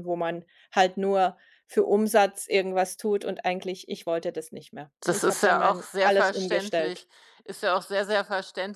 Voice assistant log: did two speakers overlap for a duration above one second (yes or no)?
yes